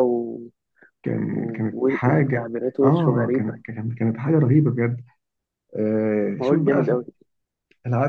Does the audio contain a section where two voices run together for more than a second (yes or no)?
yes